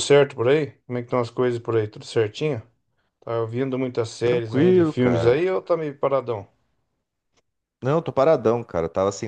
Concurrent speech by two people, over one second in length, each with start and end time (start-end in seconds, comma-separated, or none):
4.2-5.4